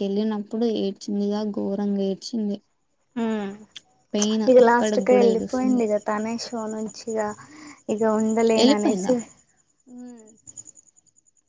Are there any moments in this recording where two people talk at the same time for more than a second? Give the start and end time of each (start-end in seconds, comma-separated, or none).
4.2-5.8